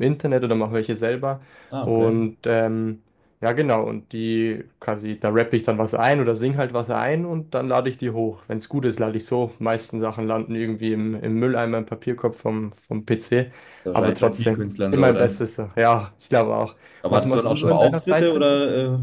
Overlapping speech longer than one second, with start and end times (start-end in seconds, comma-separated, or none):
13.9-15.4, 17.0-18.5